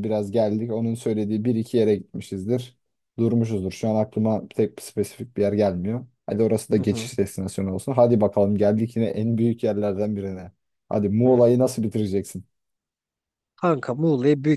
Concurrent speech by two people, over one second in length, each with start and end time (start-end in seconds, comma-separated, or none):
none